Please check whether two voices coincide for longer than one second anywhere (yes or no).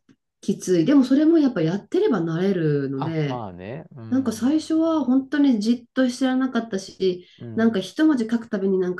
no